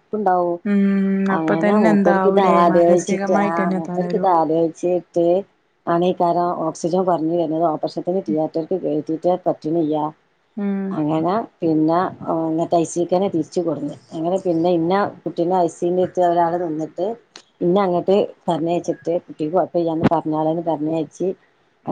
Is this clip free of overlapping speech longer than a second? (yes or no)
no